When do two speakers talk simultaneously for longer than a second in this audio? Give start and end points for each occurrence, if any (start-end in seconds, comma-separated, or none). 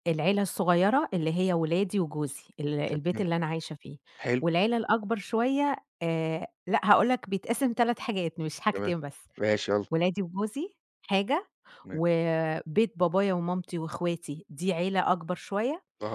none